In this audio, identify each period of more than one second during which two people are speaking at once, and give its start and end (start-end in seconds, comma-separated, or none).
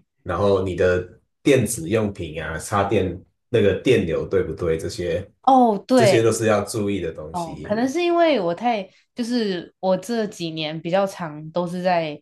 none